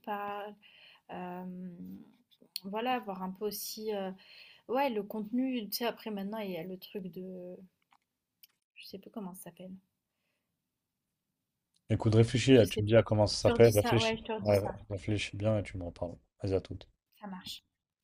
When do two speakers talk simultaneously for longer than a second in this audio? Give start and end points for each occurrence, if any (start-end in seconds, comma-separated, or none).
12.5-14.8